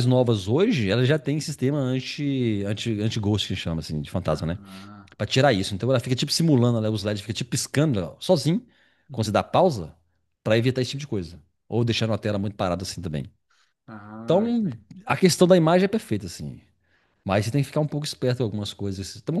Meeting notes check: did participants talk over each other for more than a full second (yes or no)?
no